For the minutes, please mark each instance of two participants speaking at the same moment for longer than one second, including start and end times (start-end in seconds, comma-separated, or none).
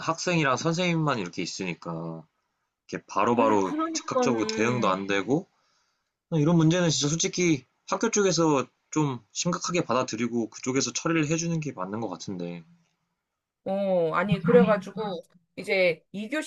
3.3-5.0